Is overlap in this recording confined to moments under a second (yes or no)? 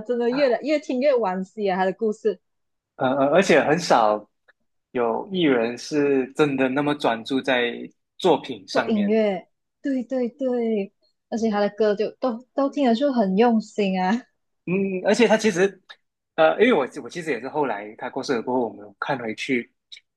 yes